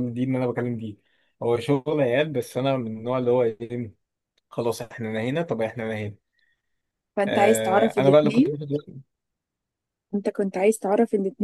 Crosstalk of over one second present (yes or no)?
yes